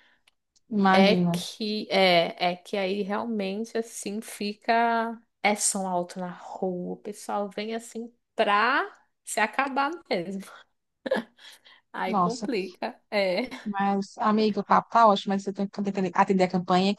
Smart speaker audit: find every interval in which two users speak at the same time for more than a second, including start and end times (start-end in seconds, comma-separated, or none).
none